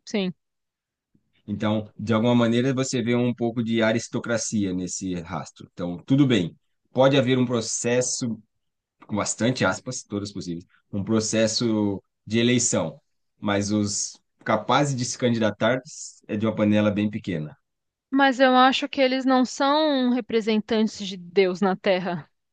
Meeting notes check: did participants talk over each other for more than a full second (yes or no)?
no